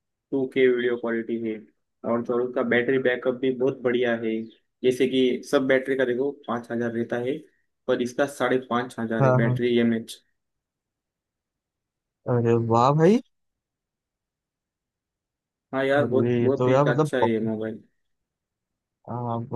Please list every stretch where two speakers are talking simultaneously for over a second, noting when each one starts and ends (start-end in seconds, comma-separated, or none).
16.0-17.5